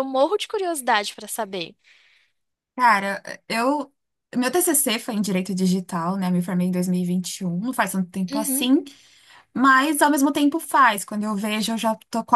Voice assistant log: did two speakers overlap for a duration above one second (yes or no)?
no